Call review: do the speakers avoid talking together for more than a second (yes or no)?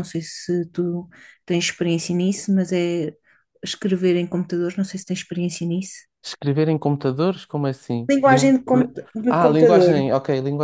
no